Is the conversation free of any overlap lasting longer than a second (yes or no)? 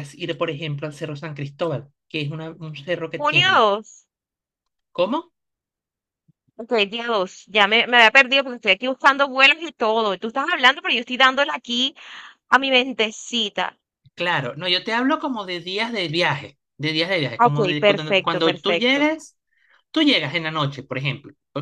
no